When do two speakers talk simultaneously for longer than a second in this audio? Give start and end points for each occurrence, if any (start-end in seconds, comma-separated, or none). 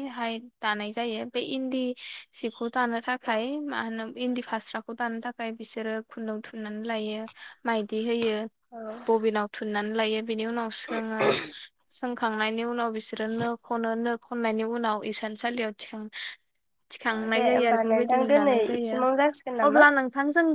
17.1-19.0